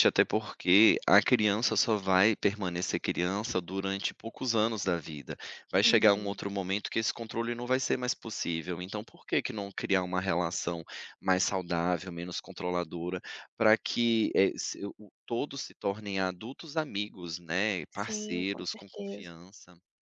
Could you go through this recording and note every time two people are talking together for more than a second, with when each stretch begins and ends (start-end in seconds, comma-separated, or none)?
17.9-19.4